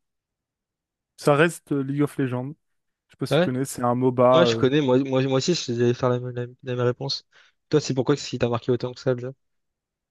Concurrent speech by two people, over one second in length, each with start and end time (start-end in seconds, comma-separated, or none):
none